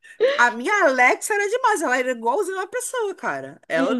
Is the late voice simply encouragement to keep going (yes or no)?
yes